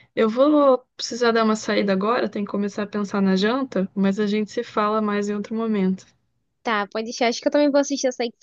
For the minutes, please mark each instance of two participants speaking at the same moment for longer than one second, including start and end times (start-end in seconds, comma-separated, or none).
none